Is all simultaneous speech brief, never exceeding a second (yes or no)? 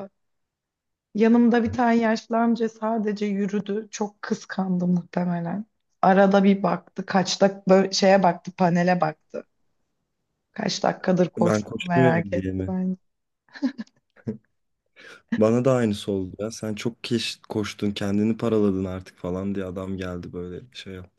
no